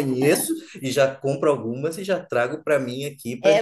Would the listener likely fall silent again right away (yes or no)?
no